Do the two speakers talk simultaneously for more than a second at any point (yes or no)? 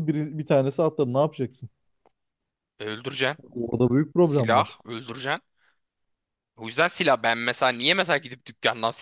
no